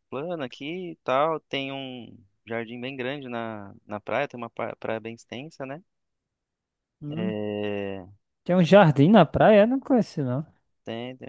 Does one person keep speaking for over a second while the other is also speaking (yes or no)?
no